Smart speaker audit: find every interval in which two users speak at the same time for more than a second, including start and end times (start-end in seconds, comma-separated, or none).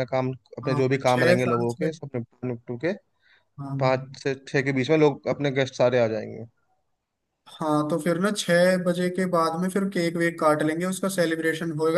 0.6-2.0